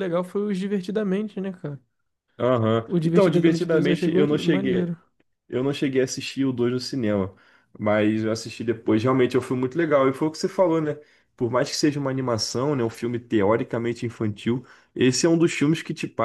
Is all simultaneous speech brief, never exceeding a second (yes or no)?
no